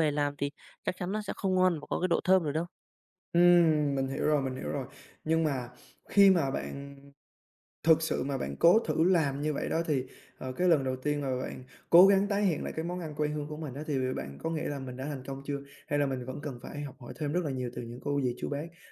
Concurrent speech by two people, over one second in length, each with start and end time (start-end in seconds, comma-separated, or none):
none